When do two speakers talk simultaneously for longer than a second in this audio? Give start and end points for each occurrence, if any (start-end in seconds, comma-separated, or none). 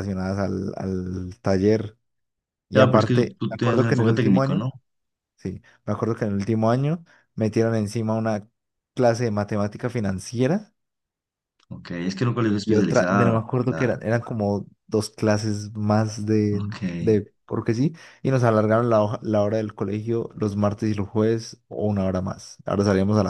2.7-4.7, 12.6-14.0